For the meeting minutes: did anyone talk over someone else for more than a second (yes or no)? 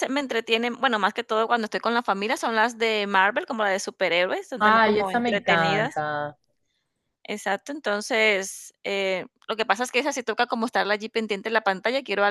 yes